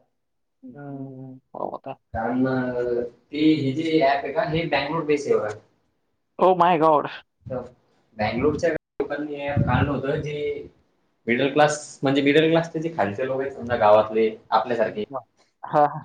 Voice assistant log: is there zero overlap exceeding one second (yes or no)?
yes